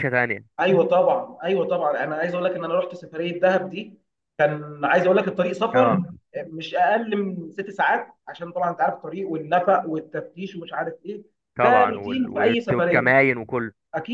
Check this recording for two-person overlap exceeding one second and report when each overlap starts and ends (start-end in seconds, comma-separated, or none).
11.6-13.1